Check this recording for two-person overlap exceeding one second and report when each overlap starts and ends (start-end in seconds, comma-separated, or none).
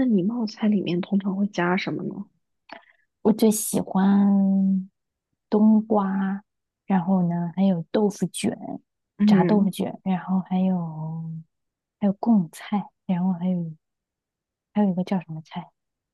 none